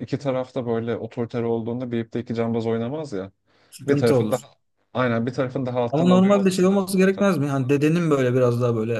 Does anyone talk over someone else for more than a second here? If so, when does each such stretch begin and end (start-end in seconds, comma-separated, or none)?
5.9-7.2